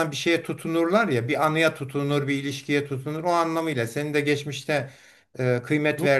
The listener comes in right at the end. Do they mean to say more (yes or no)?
no